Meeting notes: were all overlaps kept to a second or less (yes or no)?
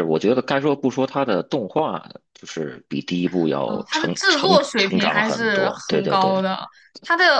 no